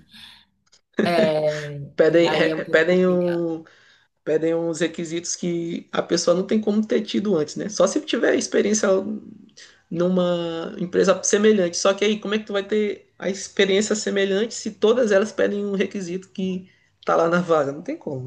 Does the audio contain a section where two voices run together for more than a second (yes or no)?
yes